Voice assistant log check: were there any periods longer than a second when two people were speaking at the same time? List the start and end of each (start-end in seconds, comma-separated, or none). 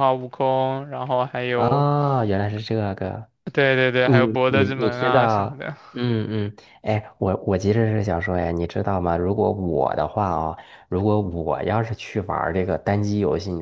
4.0-5.8